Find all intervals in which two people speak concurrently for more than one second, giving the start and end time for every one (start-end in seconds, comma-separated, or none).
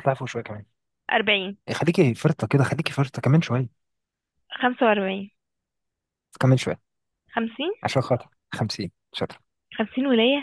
none